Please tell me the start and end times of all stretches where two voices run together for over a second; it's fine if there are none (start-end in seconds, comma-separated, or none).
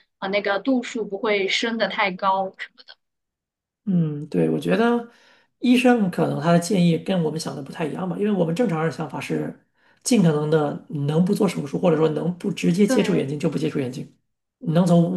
none